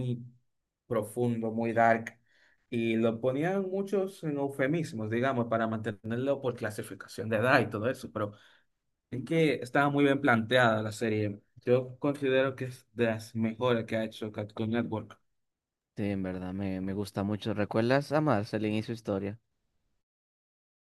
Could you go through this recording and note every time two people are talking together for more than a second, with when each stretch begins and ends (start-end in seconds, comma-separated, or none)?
none